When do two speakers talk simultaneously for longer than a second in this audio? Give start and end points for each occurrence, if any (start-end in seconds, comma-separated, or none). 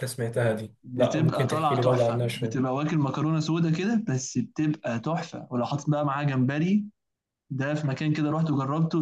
0.8-2.6